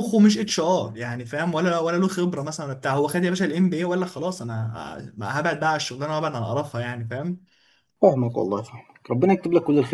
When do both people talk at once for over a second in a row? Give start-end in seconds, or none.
none